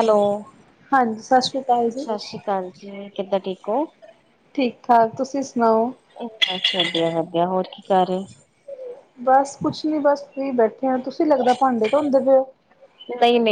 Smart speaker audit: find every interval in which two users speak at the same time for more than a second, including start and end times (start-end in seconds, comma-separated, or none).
none